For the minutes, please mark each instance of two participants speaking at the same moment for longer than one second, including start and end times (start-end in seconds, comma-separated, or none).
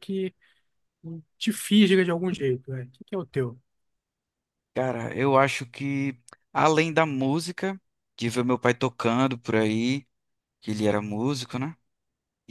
none